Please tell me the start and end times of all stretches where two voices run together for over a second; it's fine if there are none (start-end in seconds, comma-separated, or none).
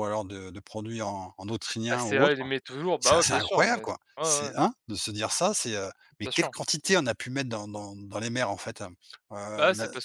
3.0-4.5